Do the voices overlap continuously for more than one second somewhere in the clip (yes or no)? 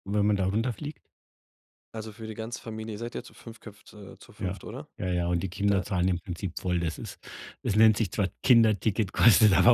no